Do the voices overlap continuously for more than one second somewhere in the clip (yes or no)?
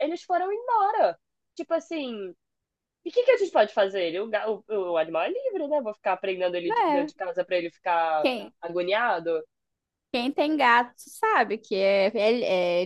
no